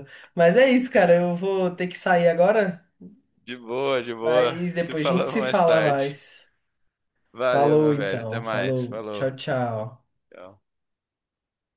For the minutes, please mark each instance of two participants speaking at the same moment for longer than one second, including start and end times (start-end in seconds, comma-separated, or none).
4.2-6.2, 7.5-9.3